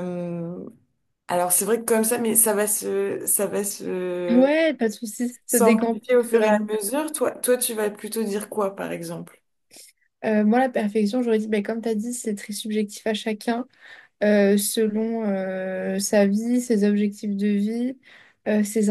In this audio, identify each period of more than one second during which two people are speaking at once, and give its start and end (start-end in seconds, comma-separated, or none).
5.5-6.8